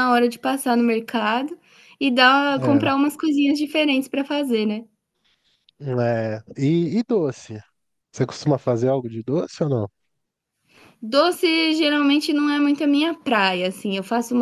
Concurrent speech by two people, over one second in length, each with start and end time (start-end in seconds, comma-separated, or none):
none